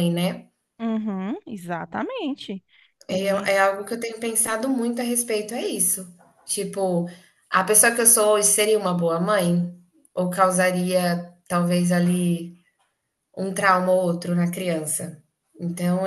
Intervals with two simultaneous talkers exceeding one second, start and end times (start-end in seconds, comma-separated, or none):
none